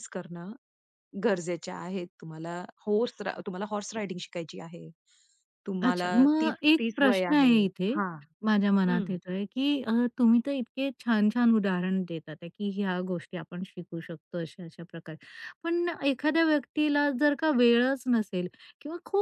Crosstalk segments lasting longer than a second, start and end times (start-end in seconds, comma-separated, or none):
5.8-7.5